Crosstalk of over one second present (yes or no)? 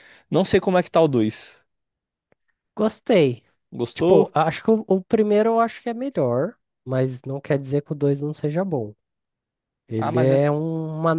no